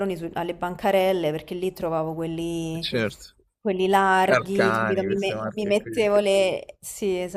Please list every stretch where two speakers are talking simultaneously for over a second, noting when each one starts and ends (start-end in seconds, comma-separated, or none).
4.2-6.1